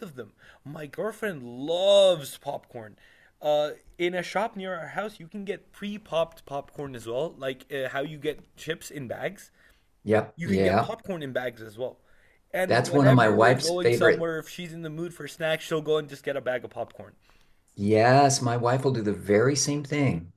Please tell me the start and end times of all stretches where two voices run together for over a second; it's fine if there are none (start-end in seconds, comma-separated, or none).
12.7-14.3